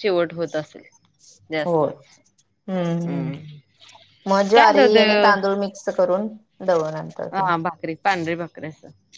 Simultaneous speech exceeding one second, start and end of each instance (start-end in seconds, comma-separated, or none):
none